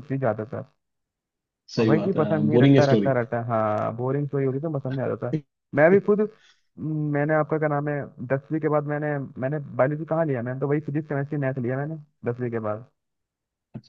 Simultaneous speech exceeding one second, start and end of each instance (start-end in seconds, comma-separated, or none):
1.8-3.1